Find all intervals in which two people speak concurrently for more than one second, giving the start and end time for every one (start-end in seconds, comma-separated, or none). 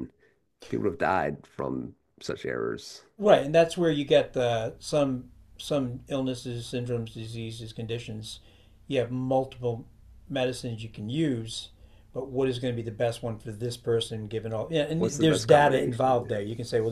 15.0-16.4